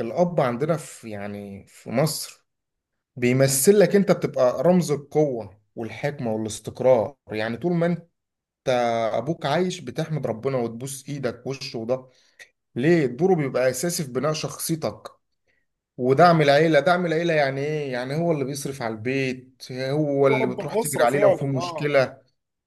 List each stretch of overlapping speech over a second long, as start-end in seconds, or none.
20.2-22.0